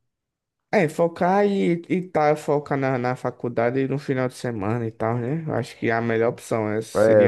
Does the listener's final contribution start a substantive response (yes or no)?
yes